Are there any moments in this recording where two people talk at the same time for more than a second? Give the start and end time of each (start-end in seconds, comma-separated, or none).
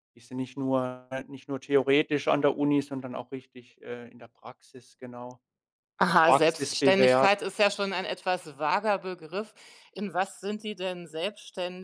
6.0-7.3